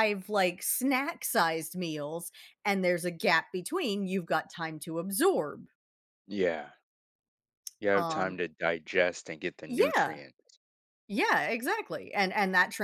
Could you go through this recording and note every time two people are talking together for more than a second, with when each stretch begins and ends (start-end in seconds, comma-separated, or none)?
none